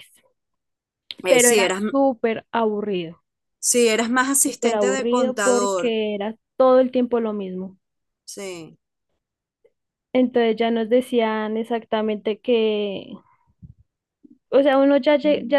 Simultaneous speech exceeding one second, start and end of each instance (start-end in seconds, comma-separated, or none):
4.5-5.9